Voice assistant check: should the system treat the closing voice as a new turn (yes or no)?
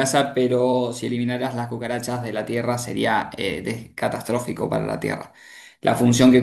no